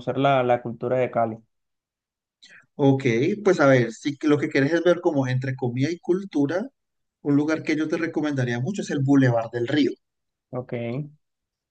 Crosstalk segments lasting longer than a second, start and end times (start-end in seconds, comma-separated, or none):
none